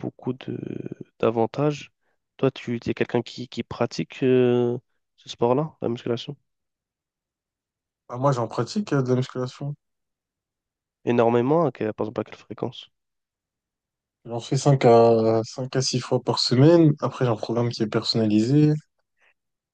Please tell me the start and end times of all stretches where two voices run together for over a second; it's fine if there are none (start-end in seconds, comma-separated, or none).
none